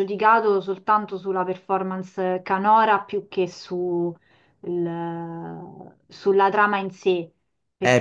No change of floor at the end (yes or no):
no